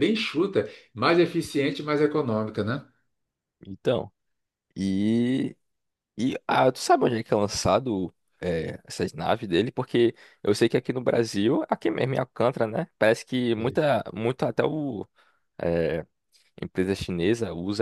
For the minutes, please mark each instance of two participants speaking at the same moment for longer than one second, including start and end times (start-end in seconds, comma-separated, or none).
none